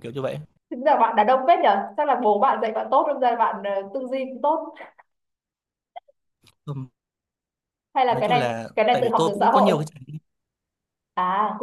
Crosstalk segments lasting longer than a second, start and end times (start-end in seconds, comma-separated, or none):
8.1-9.7